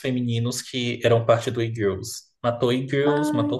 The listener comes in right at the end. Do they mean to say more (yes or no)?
no